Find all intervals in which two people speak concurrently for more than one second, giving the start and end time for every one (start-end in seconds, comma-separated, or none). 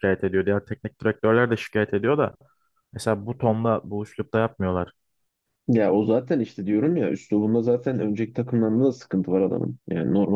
none